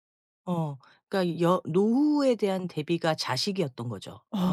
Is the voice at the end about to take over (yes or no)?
yes